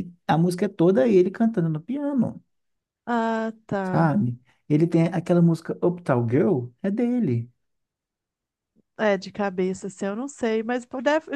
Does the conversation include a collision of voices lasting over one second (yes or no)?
no